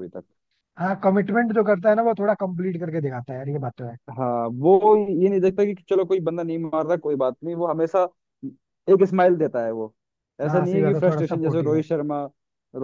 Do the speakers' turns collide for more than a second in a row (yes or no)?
yes